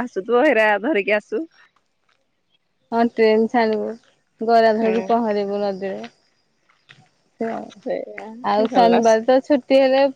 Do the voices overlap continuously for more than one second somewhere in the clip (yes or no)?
no